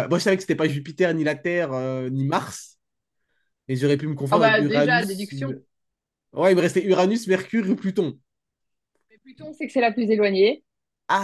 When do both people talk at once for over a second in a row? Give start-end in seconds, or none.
4.3-5.5